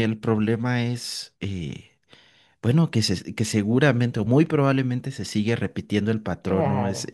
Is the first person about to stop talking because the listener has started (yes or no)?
no